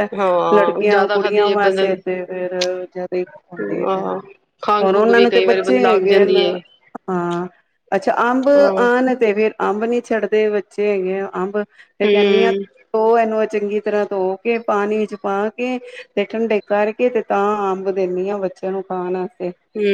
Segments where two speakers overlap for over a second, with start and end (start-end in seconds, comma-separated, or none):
0.5-1.9, 4.8-6.2